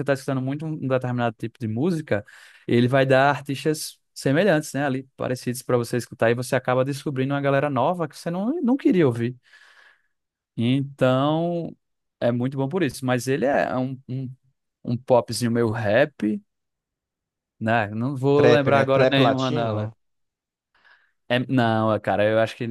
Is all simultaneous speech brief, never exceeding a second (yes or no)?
no